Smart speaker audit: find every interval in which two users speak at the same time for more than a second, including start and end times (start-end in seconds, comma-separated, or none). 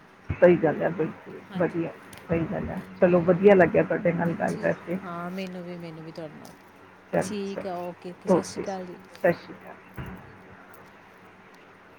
7.2-9.0